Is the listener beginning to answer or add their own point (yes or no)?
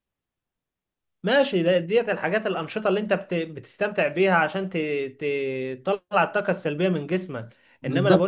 no